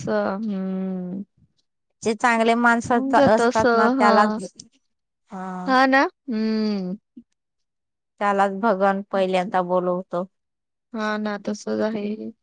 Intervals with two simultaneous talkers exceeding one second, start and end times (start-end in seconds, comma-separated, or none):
2.9-4.1